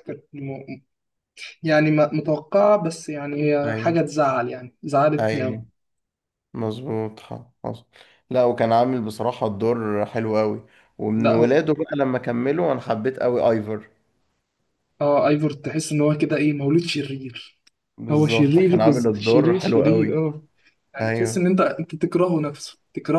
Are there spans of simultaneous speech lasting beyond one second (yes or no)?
yes